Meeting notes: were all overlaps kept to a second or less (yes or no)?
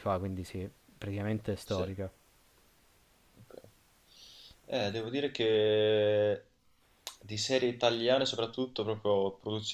yes